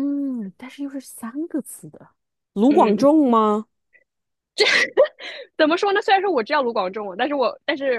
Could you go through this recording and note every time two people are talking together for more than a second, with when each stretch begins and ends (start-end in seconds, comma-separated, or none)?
none